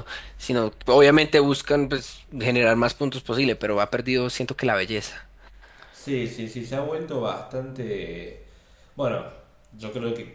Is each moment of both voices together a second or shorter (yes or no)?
yes